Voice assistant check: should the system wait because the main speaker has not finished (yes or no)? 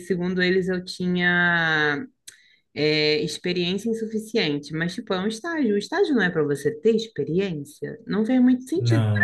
yes